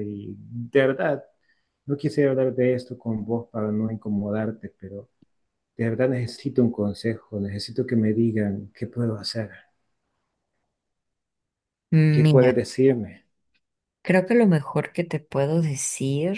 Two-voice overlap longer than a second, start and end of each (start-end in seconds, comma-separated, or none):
none